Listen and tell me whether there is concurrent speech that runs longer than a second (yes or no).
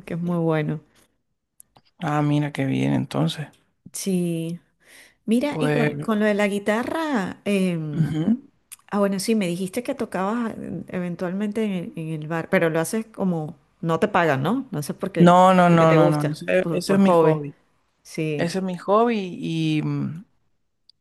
yes